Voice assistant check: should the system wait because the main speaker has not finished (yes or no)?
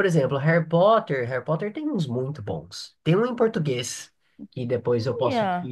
yes